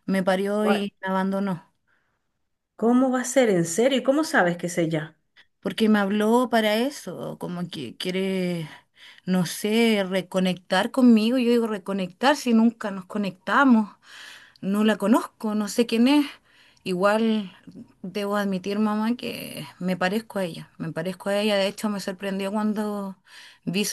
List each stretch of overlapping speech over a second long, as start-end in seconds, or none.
none